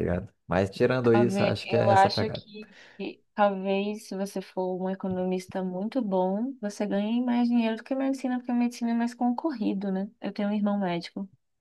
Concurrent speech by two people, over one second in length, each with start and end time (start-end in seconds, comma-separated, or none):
1.1-2.4